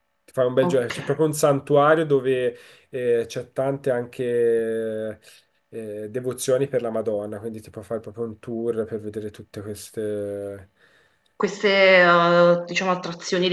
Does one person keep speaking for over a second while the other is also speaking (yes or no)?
no